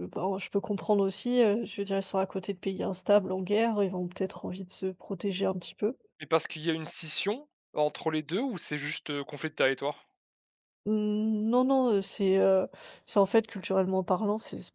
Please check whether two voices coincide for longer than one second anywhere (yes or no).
no